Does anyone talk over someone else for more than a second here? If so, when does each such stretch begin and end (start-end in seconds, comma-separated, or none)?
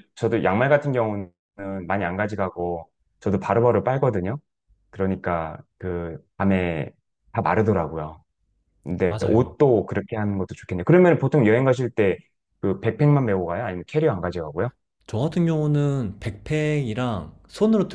none